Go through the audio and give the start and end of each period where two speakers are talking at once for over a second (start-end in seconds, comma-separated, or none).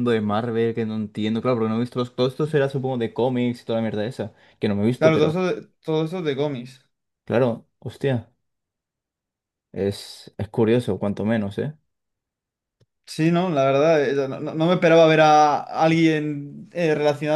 none